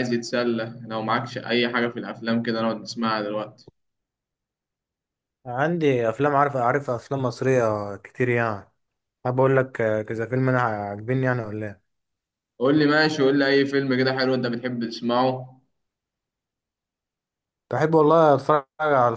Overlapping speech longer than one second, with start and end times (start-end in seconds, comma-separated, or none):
none